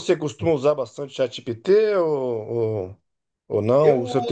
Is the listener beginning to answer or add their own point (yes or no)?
no